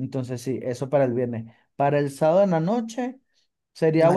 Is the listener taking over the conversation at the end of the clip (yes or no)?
no